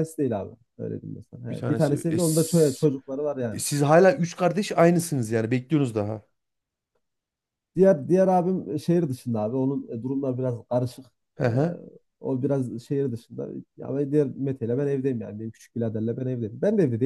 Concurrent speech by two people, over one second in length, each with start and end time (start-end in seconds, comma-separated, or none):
1.5-2.9